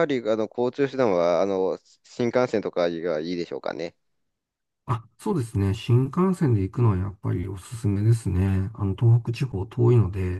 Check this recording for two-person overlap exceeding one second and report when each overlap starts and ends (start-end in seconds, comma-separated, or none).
none